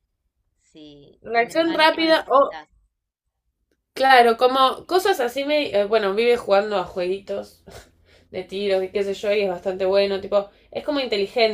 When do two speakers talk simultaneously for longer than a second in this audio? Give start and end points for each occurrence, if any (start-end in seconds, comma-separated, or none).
1.3-2.6